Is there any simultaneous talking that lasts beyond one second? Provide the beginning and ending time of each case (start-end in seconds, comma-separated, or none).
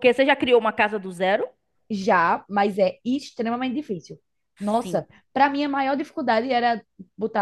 none